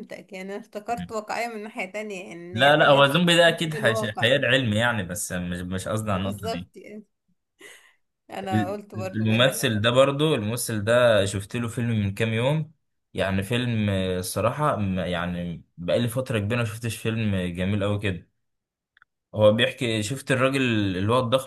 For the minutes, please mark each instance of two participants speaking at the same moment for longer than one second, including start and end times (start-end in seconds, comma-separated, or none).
2.5-4.5, 8.5-9.8